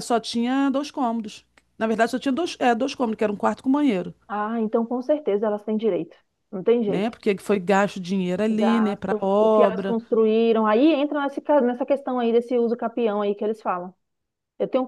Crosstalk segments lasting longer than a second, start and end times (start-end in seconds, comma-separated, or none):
8.5-10.0